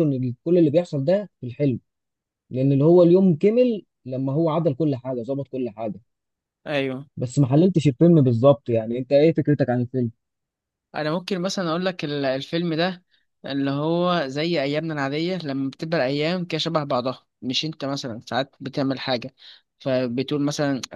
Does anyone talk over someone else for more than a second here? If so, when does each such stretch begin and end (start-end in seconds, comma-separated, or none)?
none